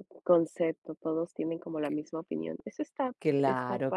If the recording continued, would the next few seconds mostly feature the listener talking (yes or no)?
yes